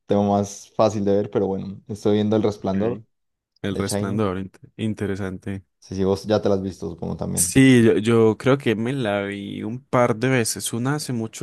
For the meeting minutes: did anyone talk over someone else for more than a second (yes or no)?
no